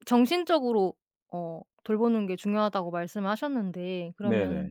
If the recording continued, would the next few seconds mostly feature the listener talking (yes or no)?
no